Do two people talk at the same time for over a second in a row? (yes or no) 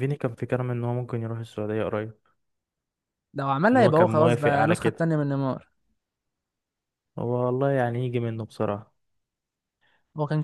yes